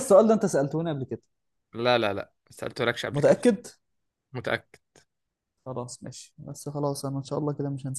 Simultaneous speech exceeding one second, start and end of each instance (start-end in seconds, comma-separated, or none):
none